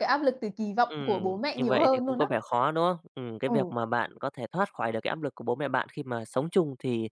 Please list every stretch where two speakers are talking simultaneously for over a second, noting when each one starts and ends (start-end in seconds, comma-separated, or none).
0.8-2.3